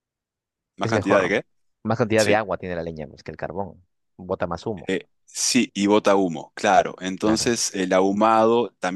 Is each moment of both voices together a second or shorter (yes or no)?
yes